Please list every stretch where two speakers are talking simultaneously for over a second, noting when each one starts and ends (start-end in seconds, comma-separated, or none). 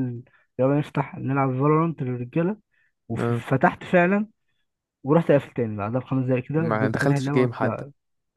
6.6-7.8